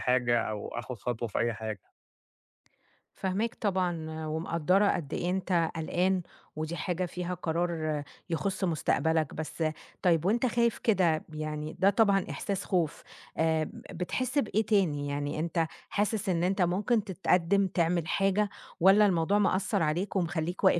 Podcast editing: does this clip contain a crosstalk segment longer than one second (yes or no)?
no